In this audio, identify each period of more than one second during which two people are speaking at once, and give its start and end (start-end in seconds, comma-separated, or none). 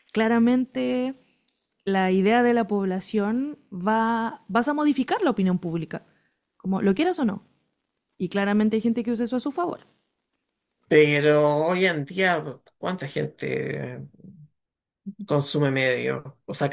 none